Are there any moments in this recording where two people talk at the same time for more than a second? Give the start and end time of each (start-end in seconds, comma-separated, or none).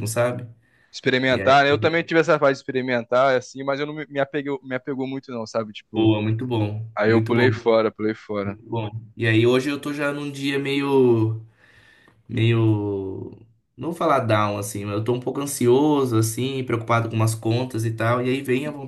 none